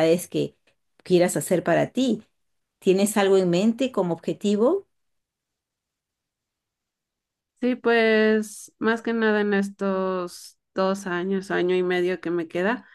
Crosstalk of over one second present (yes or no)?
no